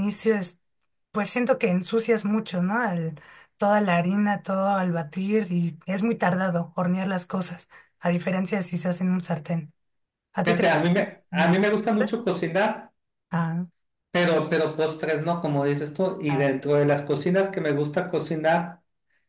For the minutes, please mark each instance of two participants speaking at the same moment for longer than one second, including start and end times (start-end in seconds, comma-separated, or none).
10.4-12.2